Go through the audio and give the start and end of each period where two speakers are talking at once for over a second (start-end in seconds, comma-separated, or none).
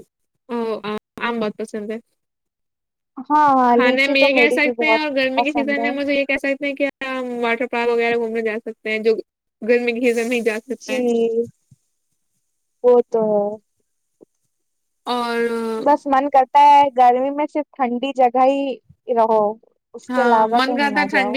3.7-5.9